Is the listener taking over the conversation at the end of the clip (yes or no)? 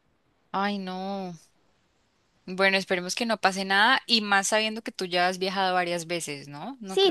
no